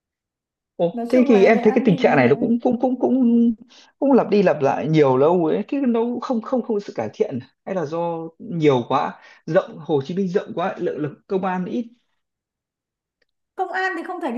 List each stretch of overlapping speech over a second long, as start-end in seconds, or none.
0.9-2.3